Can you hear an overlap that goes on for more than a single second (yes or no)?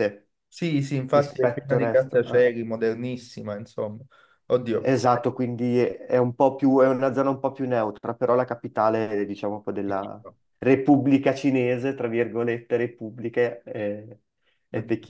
yes